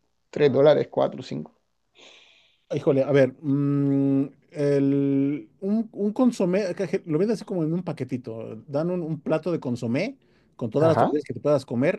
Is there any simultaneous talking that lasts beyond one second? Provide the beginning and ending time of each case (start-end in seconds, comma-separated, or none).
none